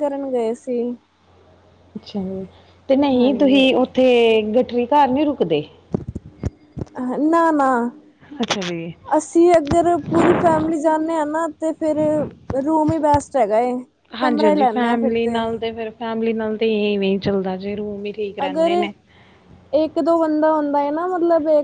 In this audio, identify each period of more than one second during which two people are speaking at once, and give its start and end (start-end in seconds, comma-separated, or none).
none